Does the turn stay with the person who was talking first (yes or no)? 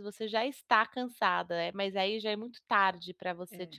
no